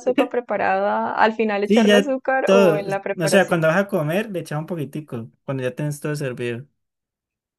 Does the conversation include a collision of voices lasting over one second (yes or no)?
yes